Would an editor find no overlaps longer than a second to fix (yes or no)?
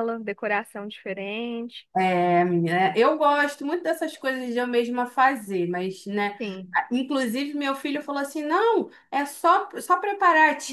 yes